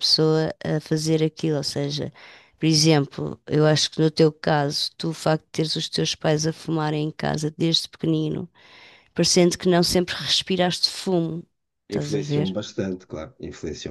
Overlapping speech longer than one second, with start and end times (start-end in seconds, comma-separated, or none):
none